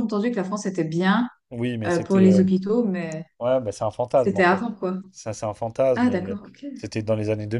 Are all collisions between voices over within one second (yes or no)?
yes